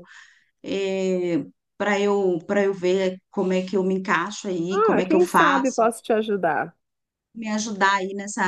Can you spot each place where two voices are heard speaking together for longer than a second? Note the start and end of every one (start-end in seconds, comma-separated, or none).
4.7-5.9